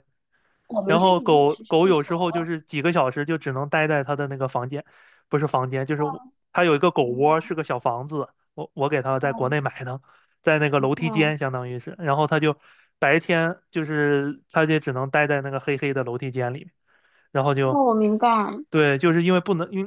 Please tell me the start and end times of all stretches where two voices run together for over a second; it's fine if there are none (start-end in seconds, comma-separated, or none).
0.8-2.5